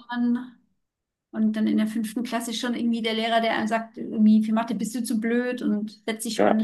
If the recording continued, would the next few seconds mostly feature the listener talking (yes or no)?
no